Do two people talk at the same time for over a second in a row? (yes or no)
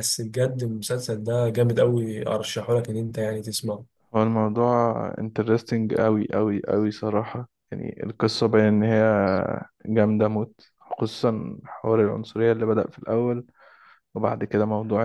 no